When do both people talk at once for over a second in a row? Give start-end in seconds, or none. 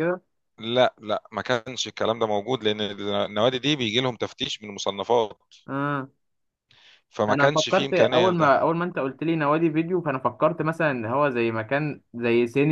7.3-8.6